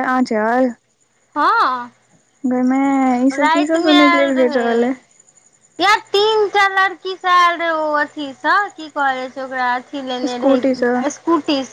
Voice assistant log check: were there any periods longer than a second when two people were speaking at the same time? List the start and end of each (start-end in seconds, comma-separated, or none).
3.3-4.9